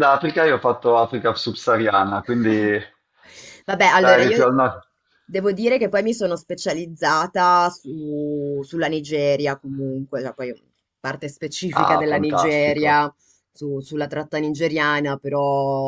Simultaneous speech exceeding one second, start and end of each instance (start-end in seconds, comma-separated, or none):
11.8-13.1